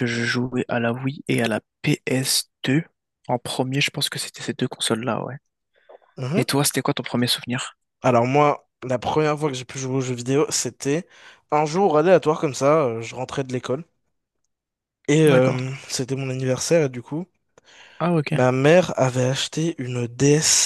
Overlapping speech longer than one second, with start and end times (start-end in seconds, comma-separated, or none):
none